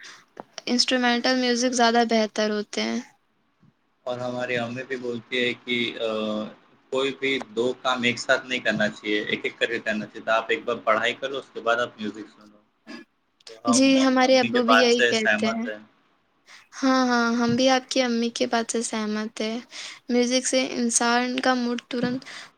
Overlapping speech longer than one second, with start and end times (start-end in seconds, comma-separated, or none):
13.7-15.5